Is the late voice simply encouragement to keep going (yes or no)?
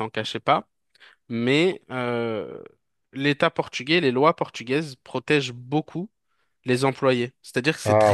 yes